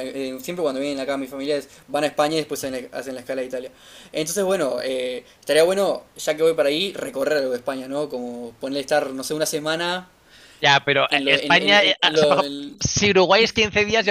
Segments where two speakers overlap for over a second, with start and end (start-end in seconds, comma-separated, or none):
11.1-12.8